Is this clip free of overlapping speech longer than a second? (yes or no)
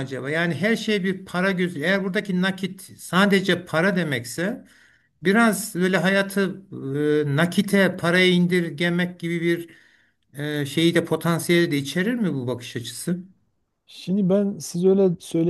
yes